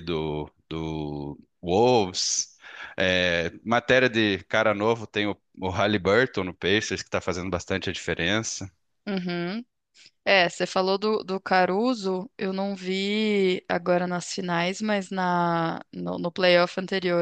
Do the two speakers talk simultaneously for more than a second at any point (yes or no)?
no